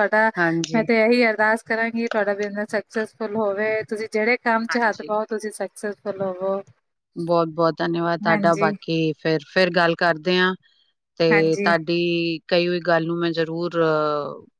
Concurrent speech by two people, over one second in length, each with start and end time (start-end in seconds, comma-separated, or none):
none